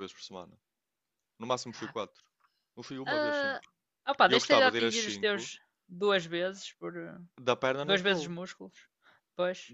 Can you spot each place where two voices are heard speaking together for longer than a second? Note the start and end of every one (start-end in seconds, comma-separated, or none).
4.3-5.5